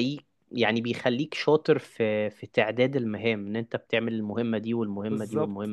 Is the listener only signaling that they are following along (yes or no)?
no